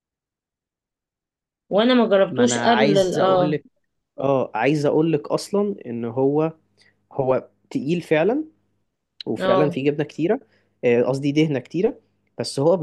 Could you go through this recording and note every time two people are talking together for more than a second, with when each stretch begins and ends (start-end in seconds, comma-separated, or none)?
2.3-3.6